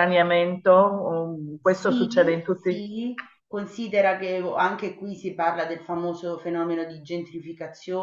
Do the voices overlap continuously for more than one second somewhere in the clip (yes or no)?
yes